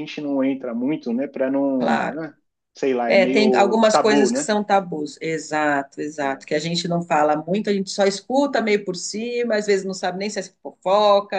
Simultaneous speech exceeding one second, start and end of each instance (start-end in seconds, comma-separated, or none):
3.1-4.5